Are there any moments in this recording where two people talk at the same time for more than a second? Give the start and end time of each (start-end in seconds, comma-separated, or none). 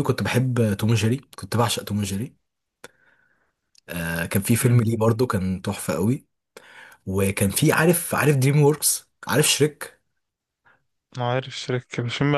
none